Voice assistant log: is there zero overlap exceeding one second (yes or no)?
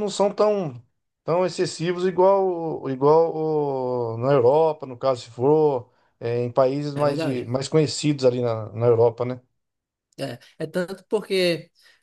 yes